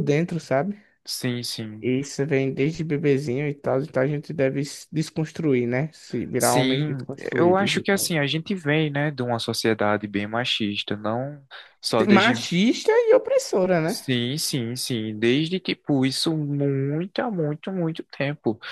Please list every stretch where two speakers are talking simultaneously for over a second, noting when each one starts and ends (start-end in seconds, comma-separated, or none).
6.4-8.1